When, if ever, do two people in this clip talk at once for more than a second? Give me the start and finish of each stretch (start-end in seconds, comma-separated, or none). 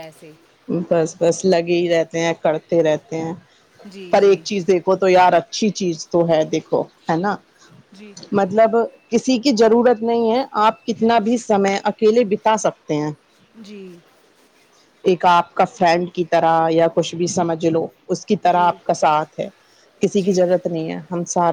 none